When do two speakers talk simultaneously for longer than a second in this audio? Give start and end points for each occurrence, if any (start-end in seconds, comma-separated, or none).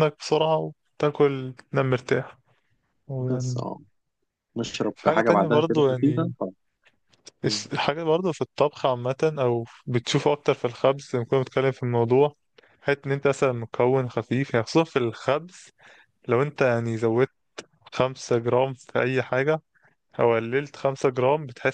4.9-6.3